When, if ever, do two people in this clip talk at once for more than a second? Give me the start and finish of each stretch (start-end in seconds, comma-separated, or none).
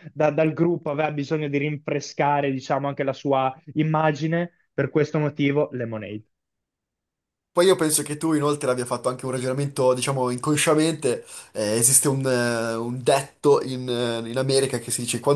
none